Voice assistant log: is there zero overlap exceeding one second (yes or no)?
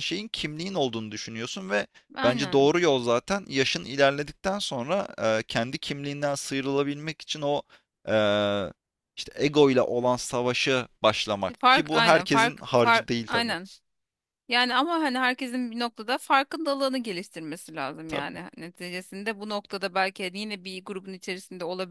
no